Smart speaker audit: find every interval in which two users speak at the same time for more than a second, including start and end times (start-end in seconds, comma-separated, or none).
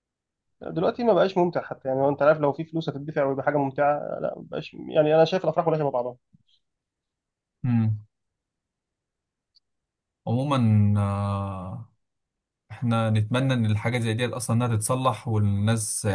none